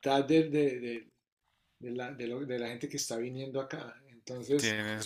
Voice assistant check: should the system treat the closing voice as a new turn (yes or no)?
no